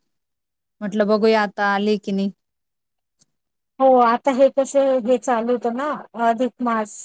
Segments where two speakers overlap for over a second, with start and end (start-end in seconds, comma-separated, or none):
none